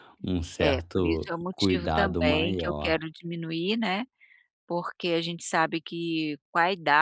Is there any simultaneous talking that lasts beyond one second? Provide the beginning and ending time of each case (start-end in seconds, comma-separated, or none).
0.6-3.0